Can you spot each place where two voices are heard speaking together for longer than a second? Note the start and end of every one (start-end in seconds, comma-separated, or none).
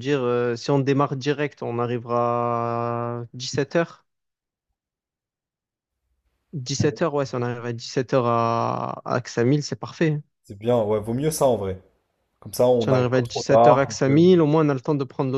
12.8-14.2